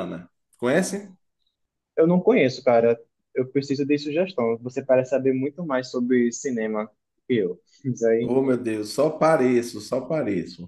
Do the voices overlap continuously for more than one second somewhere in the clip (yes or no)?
no